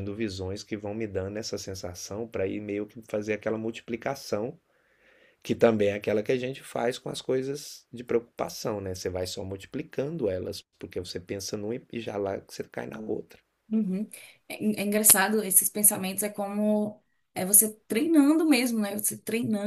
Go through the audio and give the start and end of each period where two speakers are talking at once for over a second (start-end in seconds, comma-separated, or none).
none